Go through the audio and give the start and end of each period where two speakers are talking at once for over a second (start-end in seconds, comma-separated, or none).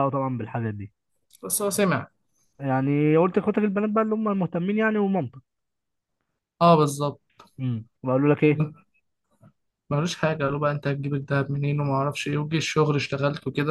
none